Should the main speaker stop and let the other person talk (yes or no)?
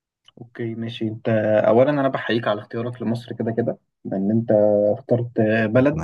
no